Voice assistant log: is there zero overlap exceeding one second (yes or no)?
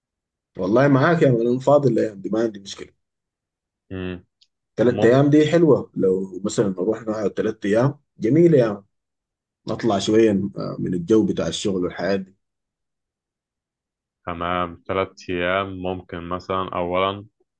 yes